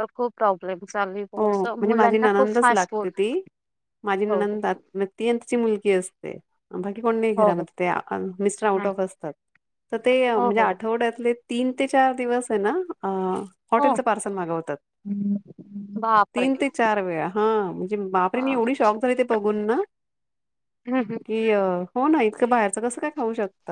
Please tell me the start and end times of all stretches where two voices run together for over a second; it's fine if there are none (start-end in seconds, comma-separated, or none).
1.4-3.1